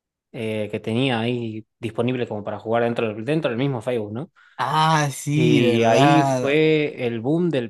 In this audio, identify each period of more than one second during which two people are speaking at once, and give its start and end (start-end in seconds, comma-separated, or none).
5.3-6.6